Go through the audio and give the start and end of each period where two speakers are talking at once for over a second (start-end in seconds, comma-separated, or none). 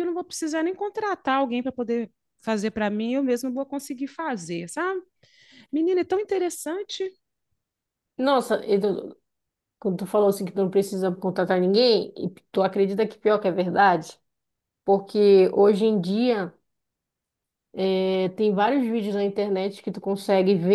none